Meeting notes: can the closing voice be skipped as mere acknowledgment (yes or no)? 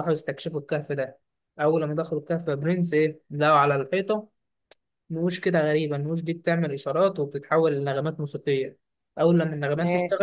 yes